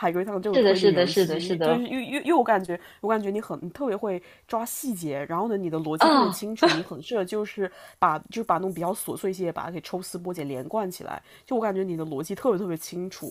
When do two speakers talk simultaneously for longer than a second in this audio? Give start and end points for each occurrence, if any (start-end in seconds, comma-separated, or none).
0.5-1.9